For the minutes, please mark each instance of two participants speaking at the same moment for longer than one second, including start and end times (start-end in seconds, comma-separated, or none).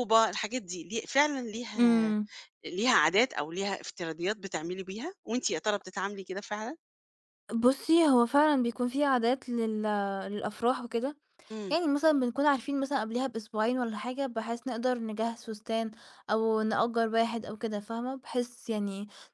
none